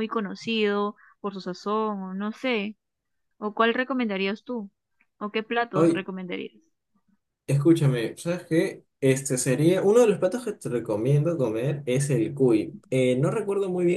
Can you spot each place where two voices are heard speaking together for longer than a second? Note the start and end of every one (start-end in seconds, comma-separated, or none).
none